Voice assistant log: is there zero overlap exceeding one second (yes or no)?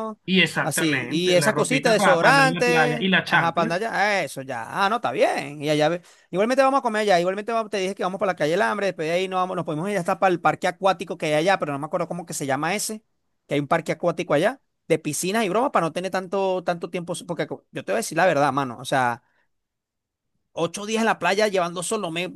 no